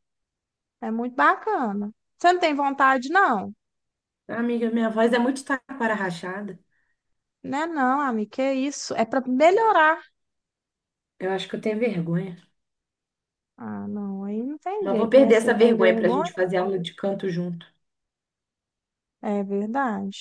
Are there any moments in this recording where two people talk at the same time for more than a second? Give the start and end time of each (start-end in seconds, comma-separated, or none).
14.8-16.3